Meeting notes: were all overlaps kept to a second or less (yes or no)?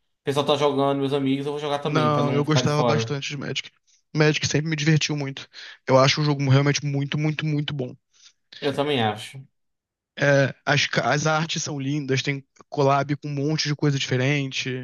no